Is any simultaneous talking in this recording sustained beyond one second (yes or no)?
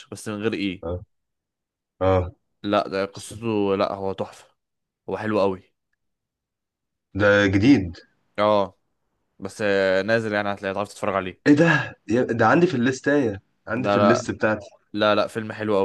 no